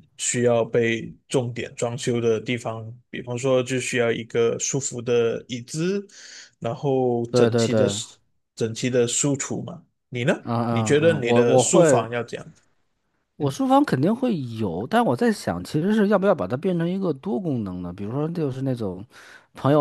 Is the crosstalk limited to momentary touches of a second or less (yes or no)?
no